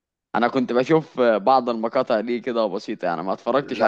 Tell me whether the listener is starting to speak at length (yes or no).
yes